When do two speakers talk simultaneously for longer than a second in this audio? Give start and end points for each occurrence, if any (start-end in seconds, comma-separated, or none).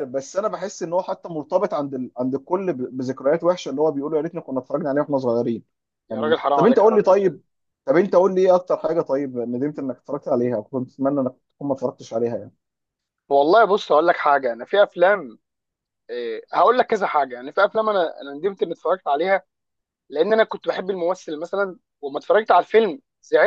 6.1-7.4